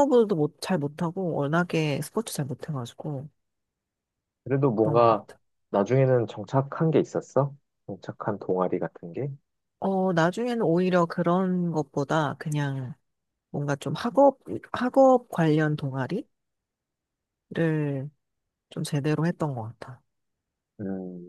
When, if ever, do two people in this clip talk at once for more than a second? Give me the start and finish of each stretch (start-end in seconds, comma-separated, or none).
none